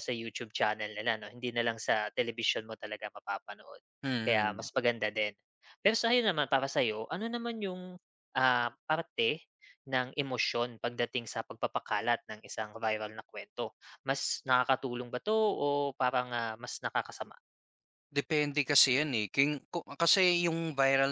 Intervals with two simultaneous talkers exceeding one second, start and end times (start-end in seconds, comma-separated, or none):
none